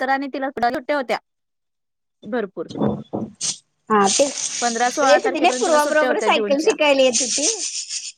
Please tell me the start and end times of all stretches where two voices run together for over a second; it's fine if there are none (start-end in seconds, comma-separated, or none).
4.6-6.7